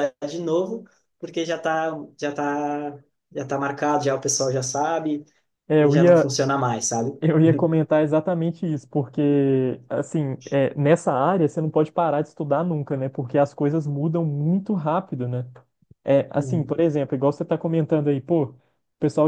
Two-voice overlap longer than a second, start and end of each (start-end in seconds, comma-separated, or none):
none